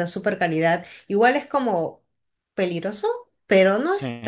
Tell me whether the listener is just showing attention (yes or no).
yes